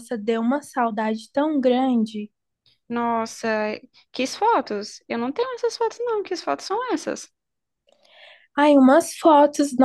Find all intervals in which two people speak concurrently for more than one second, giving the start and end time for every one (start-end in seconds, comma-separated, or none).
none